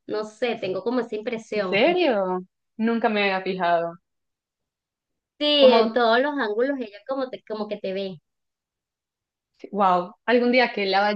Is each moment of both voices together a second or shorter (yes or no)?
yes